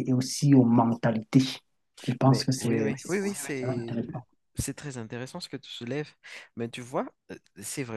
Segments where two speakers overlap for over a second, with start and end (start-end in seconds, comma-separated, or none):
2.2-4.0